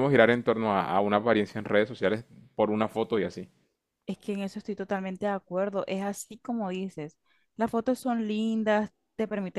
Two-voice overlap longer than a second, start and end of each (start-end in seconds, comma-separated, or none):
none